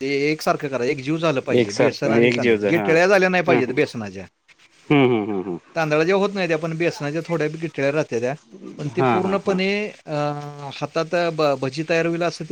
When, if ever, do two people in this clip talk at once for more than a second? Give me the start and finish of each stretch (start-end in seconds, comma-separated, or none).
1.6-3.7